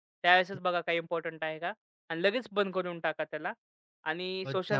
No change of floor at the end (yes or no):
no